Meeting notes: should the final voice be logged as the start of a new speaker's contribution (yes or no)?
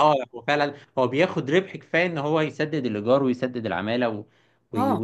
yes